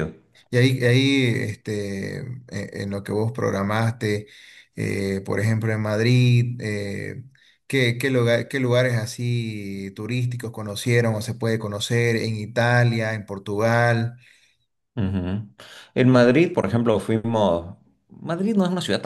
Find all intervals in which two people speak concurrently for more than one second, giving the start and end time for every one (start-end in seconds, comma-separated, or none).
none